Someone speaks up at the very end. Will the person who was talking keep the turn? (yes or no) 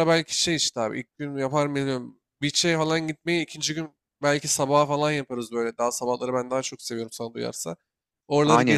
no